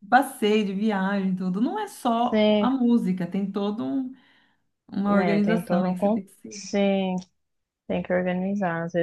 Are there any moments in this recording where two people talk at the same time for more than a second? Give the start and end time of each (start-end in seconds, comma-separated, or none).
5.0-6.6